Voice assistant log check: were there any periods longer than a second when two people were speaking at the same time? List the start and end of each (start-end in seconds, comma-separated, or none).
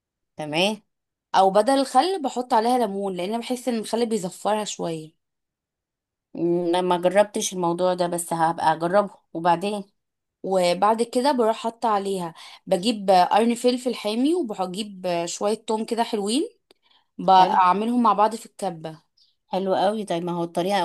none